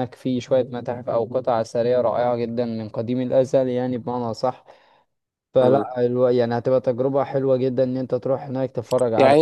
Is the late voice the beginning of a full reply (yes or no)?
yes